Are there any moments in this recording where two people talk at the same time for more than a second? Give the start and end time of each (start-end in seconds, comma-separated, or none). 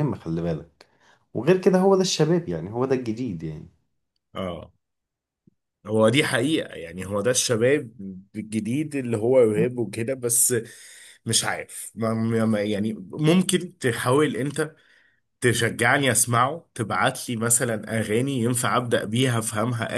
none